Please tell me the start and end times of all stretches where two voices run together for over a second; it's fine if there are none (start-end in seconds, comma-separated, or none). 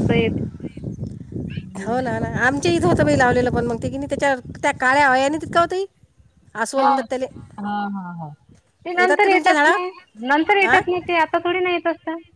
none